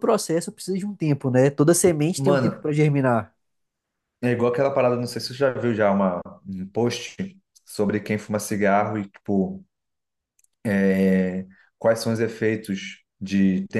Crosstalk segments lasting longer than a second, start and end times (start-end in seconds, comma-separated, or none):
none